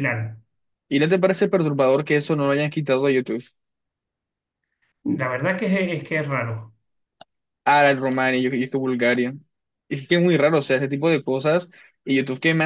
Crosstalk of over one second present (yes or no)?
no